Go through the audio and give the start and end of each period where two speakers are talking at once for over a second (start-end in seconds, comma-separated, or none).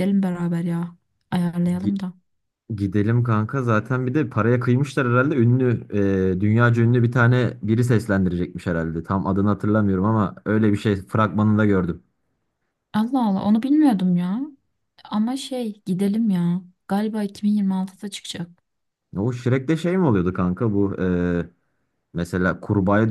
none